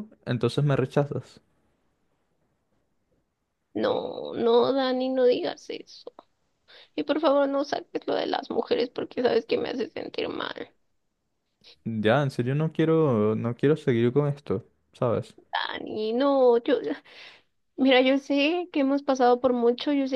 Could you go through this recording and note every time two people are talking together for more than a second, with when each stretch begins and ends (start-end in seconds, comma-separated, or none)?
none